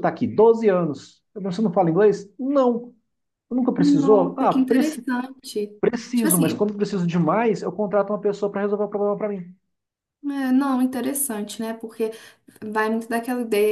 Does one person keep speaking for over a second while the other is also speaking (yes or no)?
yes